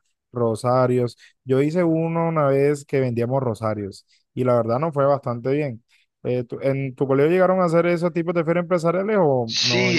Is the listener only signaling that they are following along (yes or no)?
no